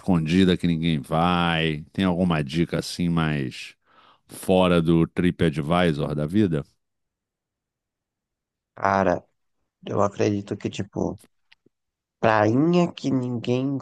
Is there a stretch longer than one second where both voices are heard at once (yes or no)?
no